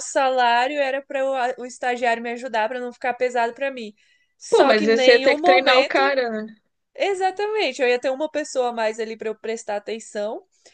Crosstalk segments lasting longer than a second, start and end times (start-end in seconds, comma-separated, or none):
4.5-6.0